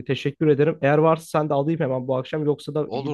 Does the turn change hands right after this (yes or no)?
yes